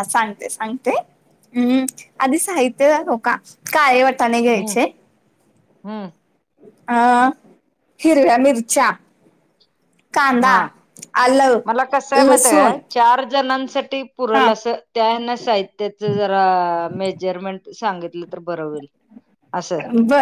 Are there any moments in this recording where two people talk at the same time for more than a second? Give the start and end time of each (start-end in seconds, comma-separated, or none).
none